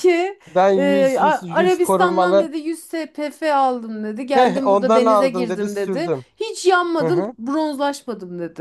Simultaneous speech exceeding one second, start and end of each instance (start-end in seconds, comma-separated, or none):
0.8-2.5, 4.3-6.2